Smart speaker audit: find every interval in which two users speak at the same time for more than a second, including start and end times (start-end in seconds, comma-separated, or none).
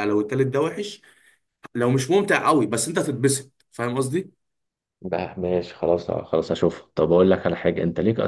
none